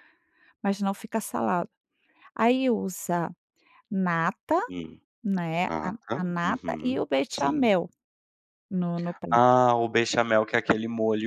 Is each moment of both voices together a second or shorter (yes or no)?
no